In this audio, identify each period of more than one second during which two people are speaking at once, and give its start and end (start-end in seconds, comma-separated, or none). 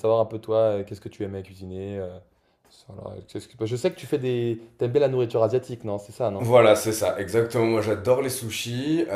none